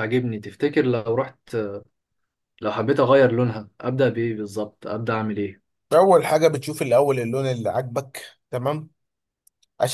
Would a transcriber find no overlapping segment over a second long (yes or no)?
yes